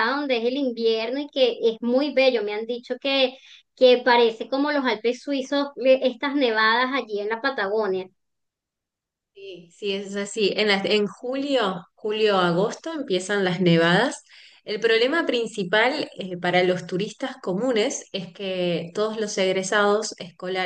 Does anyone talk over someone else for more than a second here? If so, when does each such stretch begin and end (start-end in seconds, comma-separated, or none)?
none